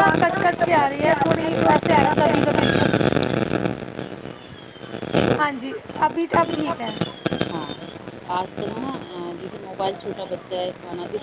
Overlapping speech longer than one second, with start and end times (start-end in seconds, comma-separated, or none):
0.8-2.4